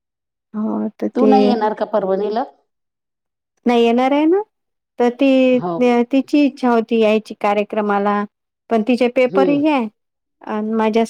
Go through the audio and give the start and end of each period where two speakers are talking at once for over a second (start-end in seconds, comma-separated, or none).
none